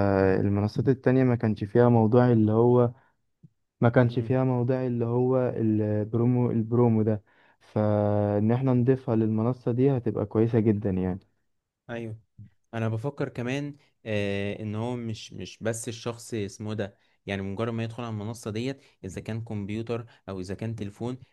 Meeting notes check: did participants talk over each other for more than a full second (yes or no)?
no